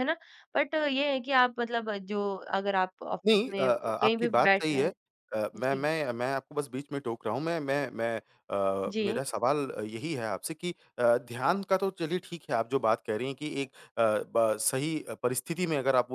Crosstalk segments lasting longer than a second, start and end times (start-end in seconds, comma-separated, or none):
3.3-4.9